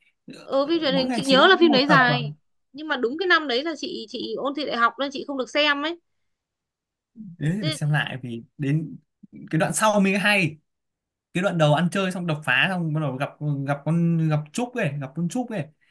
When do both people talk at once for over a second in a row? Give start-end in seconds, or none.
0.6-2.2